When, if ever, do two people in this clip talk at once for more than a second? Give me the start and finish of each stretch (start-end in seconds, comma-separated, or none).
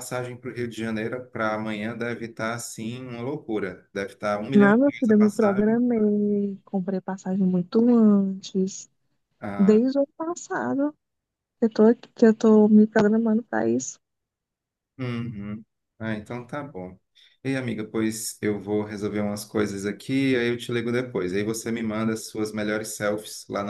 4.5-5.8